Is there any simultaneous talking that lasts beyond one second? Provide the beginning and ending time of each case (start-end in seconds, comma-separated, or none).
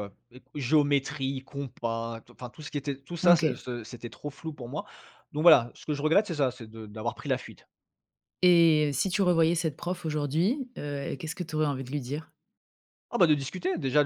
none